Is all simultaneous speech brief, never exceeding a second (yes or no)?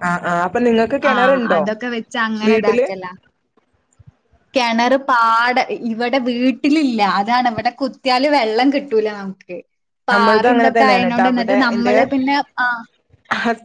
no